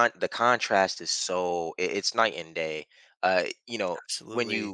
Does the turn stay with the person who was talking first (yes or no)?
yes